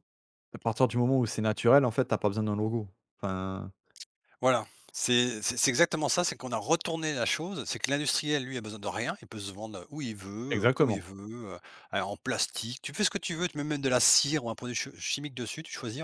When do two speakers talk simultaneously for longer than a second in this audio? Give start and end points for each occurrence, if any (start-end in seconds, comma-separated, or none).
none